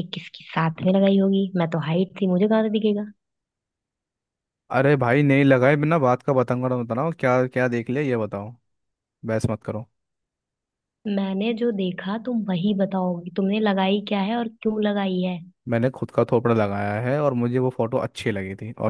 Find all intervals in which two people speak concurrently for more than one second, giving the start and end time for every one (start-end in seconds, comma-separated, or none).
none